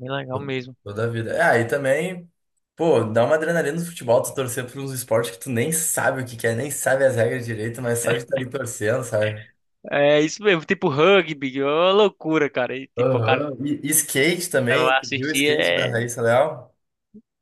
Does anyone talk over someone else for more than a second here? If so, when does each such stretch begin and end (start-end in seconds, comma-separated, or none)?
14.7-16.1